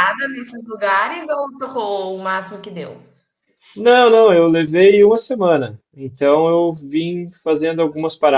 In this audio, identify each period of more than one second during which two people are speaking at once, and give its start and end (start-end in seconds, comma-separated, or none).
none